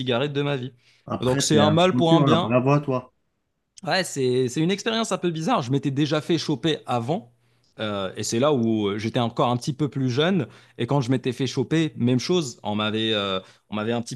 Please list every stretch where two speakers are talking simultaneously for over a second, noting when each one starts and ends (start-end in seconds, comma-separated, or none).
1.2-2.5